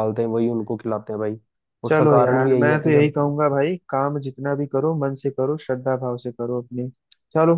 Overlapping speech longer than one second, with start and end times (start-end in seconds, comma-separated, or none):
1.9-3.1